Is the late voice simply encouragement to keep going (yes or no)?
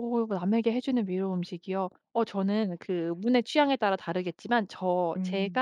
yes